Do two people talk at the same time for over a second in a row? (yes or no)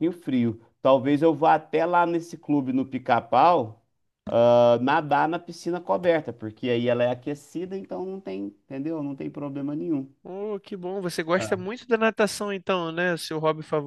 no